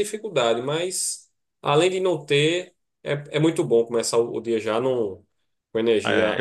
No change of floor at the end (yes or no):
no